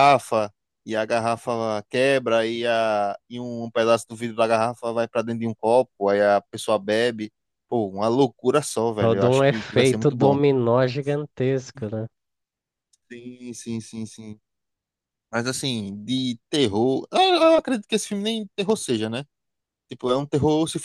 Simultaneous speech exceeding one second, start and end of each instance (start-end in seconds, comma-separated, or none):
9.0-10.4